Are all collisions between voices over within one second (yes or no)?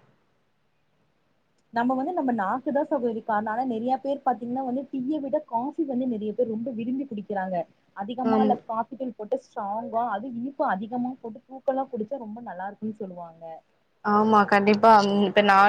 yes